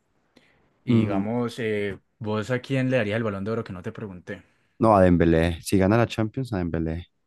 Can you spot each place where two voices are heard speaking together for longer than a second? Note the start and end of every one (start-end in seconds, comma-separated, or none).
none